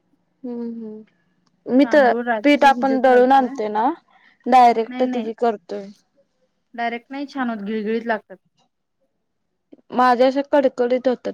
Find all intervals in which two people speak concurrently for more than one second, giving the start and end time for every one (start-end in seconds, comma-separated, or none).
1.8-3.5